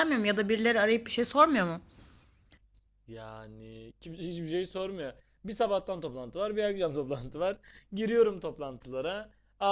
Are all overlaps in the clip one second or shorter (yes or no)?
yes